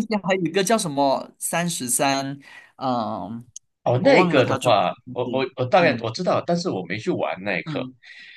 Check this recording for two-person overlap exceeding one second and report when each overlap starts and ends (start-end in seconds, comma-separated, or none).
4.0-6.2